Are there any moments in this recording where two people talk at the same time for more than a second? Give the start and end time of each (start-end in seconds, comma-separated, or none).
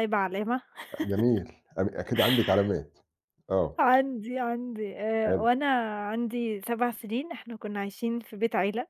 none